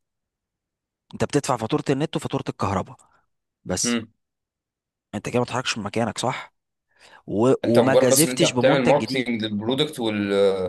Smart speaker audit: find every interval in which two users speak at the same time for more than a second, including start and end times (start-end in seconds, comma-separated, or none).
7.6-9.3